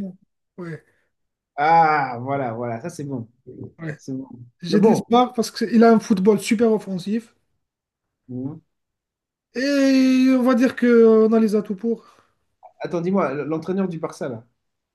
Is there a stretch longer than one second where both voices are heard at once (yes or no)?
no